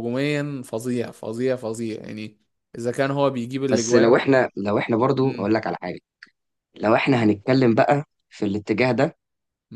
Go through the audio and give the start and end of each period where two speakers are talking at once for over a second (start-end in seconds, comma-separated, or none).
none